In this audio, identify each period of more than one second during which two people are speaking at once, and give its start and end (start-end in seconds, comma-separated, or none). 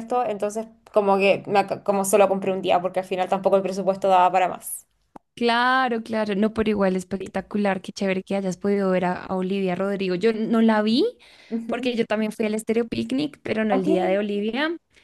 none